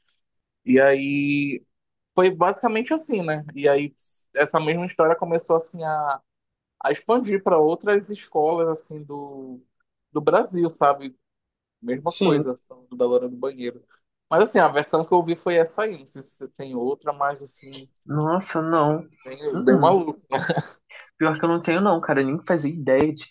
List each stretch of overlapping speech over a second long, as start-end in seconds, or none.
none